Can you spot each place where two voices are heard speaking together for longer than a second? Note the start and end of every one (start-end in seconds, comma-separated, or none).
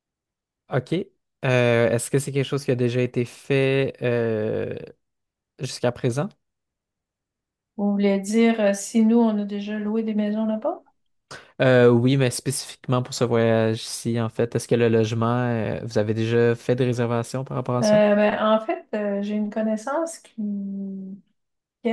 none